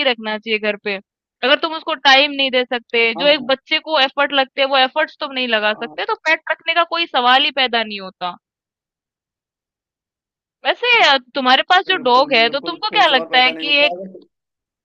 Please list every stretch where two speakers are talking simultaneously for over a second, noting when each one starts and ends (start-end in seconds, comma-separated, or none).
11.9-13.9